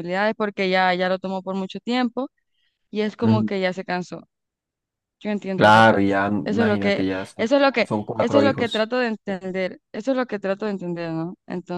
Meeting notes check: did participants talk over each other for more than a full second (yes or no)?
yes